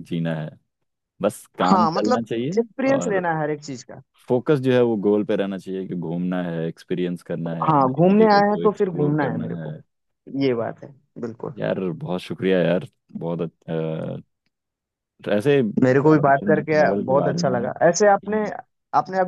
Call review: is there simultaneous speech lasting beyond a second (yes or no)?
yes